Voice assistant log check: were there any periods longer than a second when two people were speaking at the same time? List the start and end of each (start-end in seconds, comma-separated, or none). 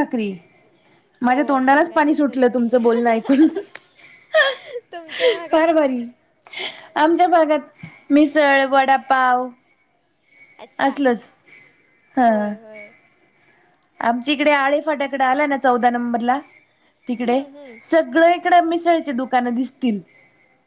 1.3-2.9